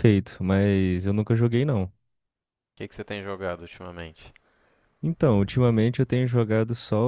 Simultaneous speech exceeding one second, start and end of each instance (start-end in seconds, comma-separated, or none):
none